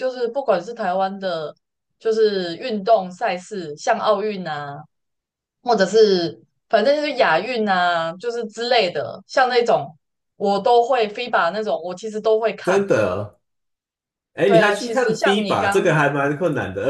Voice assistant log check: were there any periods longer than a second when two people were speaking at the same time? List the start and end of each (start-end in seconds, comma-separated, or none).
14.4-15.9